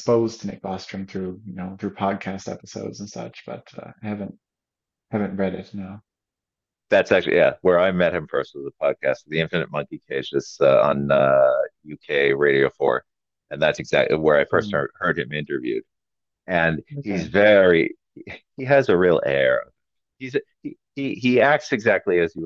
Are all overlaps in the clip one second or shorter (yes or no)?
yes